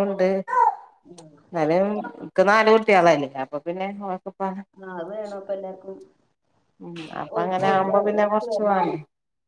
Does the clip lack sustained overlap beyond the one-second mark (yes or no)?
no